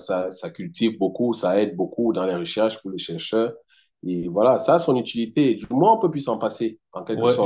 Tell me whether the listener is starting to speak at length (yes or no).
yes